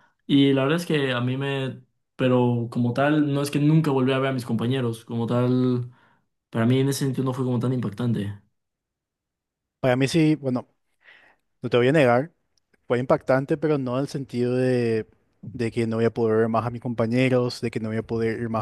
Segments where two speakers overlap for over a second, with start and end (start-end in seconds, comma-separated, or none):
none